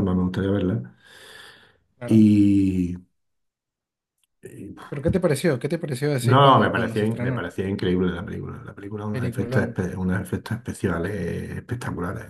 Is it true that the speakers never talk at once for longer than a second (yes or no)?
no